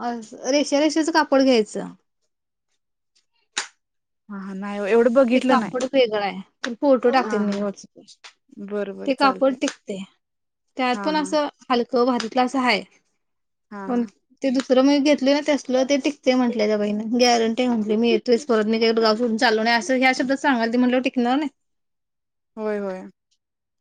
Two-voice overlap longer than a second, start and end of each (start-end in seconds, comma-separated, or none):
none